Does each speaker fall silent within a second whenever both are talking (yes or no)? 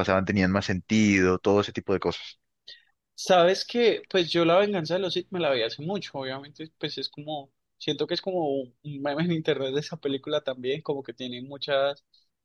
yes